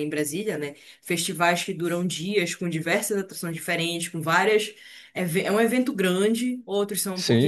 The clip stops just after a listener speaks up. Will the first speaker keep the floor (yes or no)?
yes